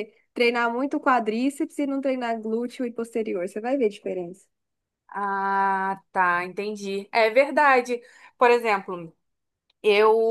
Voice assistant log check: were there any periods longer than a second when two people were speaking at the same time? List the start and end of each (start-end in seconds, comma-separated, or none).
none